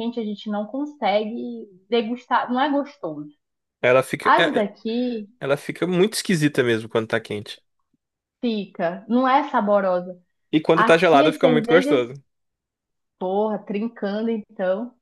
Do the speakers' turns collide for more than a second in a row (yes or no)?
yes